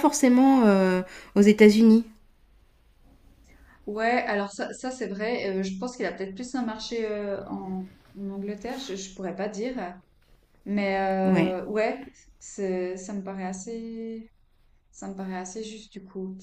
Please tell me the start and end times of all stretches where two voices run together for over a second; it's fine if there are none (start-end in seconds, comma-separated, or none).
none